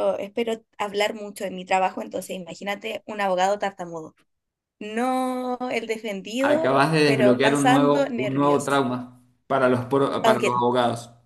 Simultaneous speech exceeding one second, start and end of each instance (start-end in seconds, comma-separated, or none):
6.4-8.8